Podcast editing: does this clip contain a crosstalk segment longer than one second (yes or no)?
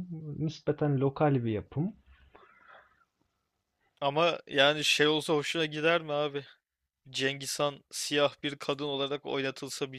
no